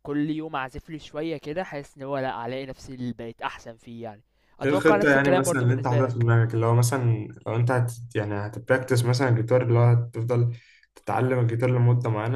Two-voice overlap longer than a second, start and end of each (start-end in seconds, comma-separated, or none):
4.7-6.3